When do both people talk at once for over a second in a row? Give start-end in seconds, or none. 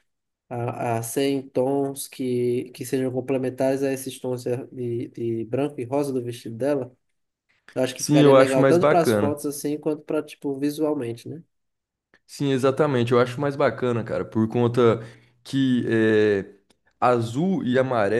8.0-9.4